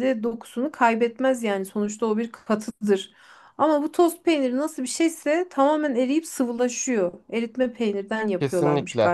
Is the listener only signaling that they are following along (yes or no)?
no